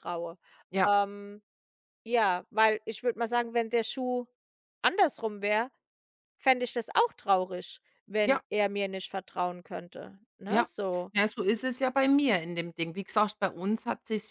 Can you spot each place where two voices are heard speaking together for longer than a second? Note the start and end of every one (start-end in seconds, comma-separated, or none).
none